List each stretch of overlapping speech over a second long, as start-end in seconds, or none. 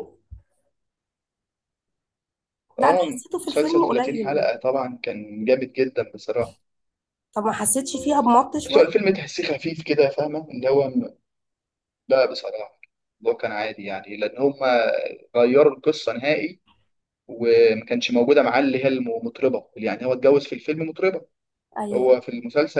2.8-4.6